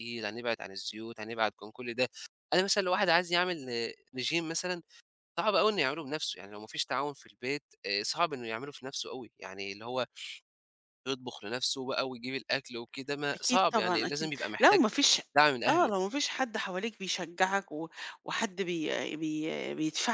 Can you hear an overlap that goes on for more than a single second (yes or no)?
yes